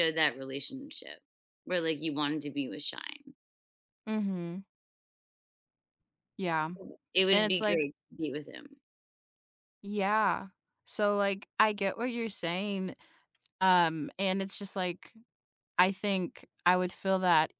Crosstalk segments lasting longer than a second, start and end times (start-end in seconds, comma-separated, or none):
none